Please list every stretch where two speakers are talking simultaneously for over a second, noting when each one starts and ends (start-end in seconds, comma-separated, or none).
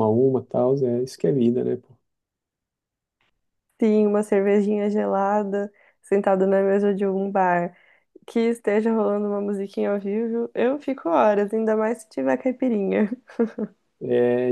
none